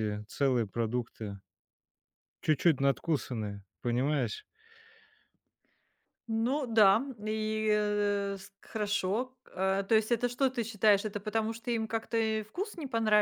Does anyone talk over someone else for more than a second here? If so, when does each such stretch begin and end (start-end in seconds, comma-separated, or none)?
none